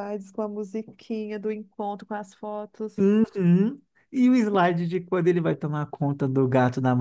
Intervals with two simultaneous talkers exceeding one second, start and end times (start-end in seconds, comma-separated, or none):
none